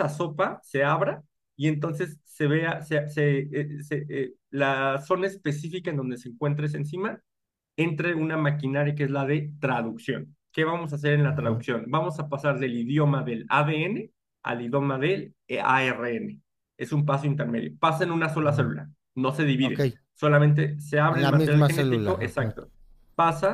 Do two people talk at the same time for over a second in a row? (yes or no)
yes